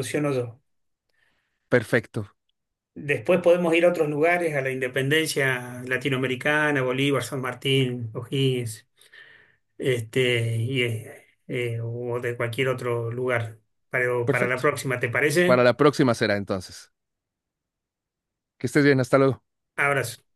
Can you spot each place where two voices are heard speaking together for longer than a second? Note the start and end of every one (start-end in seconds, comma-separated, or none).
none